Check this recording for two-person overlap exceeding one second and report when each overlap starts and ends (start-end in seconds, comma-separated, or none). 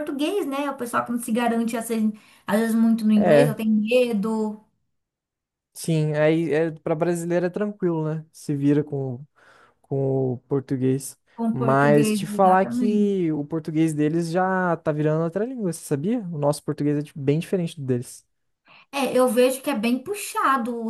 11.5-13.2